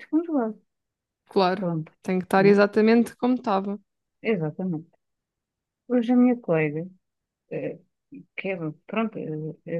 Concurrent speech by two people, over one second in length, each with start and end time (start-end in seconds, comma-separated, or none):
none